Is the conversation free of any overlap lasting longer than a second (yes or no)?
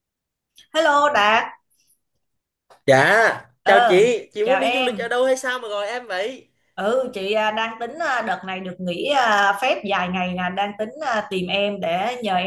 no